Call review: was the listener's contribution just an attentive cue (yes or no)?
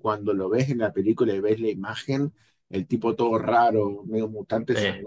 yes